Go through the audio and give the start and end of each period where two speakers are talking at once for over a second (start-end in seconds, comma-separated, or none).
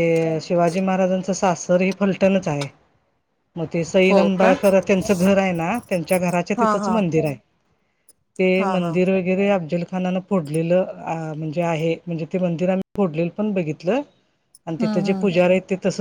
none